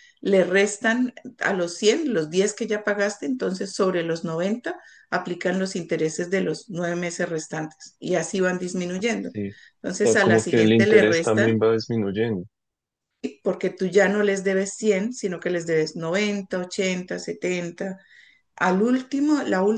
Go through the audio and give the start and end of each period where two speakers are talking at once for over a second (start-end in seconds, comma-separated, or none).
10.0-11.5